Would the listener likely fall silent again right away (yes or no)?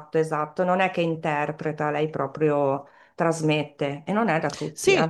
no